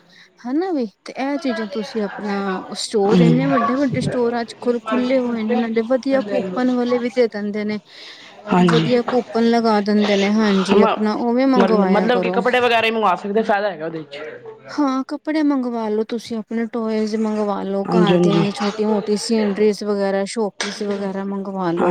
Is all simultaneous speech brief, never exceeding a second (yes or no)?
yes